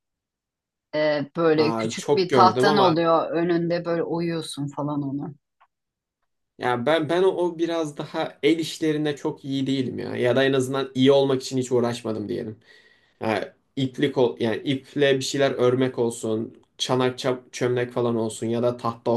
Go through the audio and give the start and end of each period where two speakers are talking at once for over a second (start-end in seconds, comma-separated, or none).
1.6-3.0